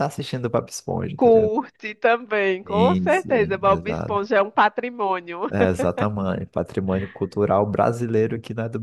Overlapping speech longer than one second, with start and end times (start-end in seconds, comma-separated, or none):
2.6-4.3